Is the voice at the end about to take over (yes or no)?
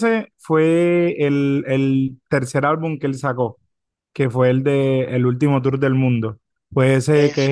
no